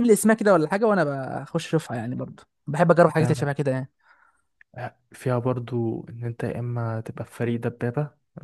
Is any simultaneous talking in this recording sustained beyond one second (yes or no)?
no